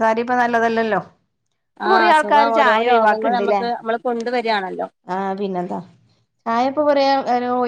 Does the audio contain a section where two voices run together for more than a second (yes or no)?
yes